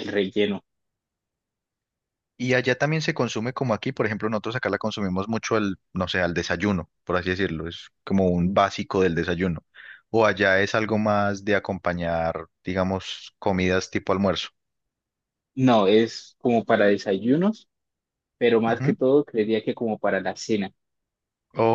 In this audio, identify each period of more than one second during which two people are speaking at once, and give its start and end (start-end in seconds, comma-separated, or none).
none